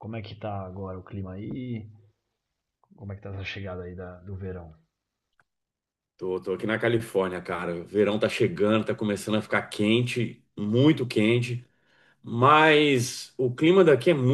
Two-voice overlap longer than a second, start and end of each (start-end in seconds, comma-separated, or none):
none